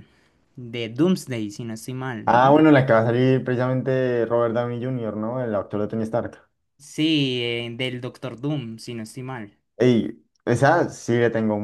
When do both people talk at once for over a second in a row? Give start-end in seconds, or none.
none